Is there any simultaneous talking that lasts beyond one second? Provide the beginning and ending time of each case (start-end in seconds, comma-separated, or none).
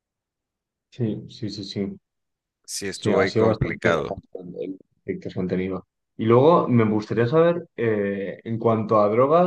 2.9-4.1